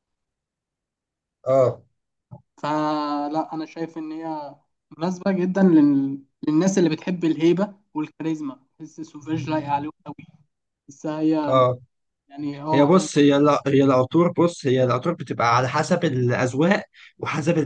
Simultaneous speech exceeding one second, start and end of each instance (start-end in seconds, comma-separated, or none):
none